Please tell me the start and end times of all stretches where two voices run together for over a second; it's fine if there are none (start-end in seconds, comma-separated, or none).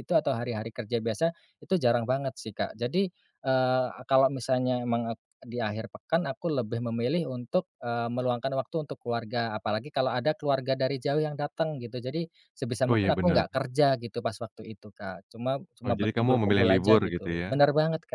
15.8-17.6